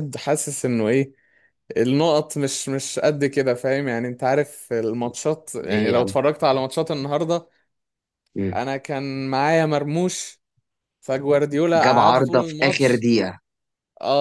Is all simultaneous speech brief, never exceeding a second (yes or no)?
no